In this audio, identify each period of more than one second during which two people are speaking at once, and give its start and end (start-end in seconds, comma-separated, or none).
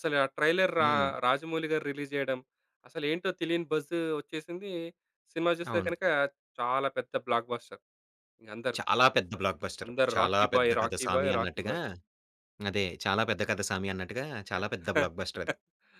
9.8-11.8